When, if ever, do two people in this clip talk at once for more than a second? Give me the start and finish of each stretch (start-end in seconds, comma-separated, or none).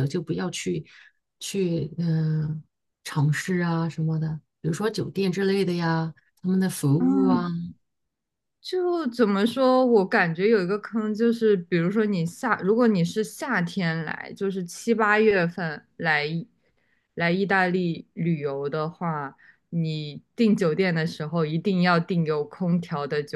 none